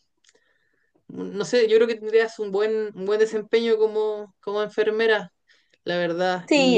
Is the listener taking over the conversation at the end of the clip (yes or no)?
yes